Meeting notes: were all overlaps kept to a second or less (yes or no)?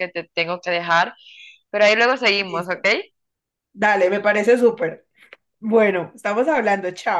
yes